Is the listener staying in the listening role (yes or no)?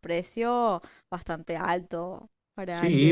no